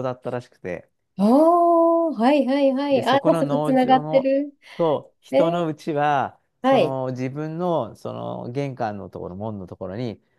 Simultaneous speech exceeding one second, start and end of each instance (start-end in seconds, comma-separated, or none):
2.9-4.3